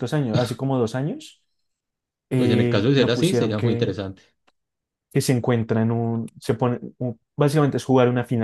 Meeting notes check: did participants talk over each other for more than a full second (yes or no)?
yes